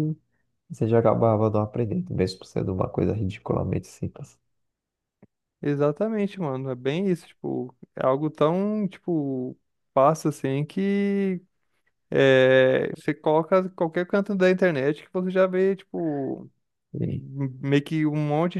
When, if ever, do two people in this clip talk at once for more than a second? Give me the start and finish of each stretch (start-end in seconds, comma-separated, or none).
none